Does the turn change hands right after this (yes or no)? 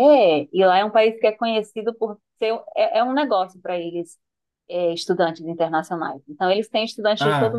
no